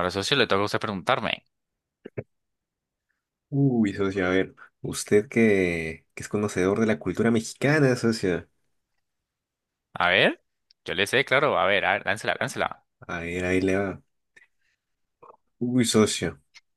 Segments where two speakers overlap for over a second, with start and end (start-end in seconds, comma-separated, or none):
none